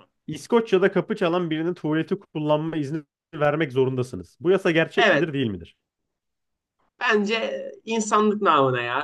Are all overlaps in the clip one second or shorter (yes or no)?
yes